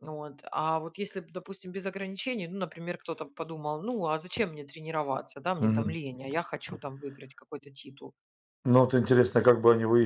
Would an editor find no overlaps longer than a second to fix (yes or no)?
yes